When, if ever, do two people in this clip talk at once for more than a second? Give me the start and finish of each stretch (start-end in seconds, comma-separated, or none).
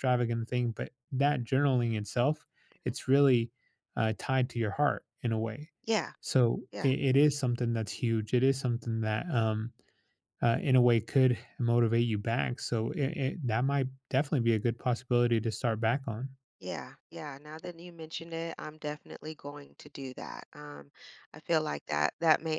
none